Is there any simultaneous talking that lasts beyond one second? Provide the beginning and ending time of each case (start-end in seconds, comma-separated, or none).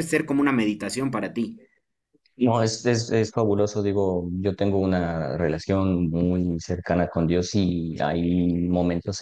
none